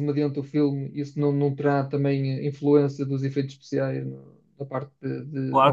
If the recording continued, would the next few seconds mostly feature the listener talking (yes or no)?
yes